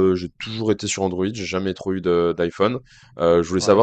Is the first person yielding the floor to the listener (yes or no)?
no